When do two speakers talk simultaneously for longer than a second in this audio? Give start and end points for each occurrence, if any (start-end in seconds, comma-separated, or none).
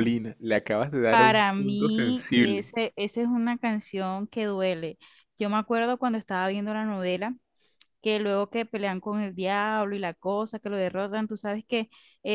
1.1-2.7